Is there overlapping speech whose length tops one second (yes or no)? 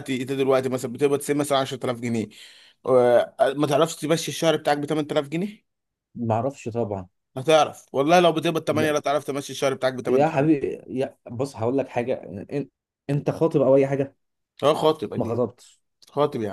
no